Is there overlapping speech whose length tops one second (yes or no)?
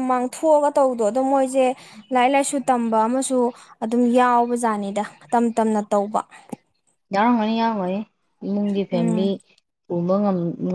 no